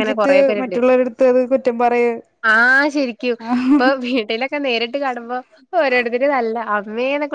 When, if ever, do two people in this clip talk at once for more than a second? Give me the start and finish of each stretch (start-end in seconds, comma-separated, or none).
none